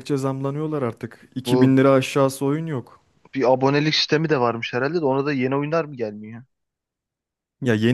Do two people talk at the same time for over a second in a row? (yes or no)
no